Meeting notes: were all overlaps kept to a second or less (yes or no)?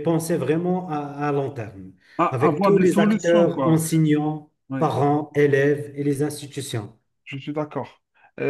no